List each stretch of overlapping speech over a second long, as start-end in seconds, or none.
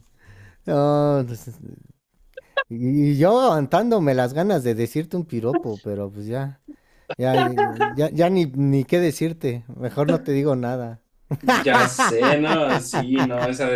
none